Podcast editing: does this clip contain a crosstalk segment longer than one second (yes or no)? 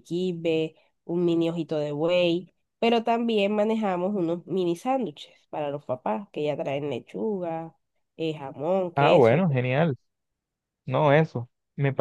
no